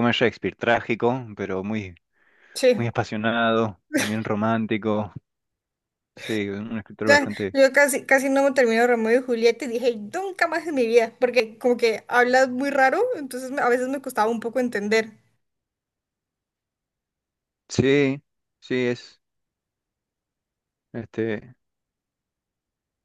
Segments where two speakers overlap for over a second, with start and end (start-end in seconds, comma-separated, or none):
none